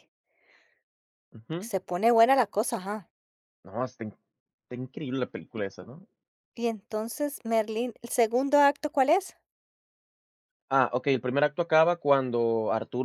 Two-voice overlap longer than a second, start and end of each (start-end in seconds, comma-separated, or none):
none